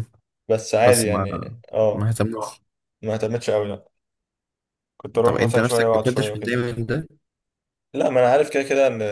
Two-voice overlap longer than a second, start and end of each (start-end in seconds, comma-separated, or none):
5.2-6.6